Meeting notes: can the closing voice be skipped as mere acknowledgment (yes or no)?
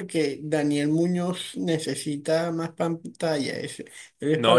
no